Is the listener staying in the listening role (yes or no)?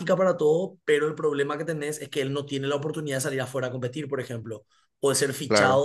yes